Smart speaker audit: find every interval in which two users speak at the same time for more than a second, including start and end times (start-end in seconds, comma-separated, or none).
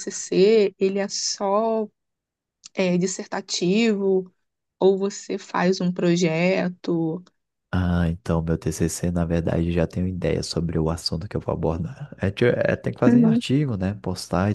none